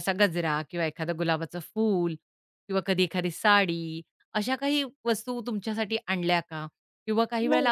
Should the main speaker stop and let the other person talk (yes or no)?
no